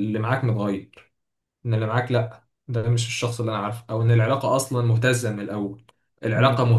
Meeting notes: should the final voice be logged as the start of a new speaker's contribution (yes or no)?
no